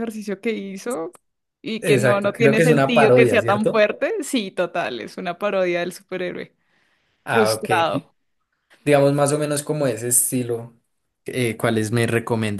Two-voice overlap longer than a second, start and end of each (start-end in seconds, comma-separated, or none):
1.8-3.8